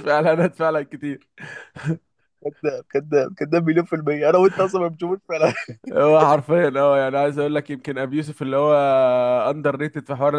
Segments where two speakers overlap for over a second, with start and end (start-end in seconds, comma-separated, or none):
none